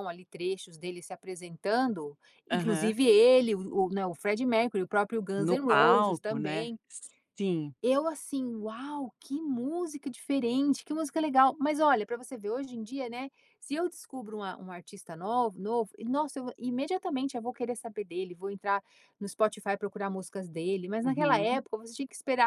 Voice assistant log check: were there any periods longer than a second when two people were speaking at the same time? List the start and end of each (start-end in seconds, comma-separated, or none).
5.3-6.7